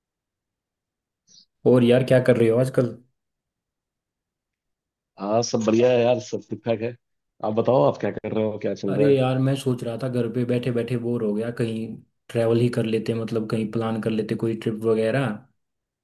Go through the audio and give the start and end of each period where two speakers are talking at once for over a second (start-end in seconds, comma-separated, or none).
none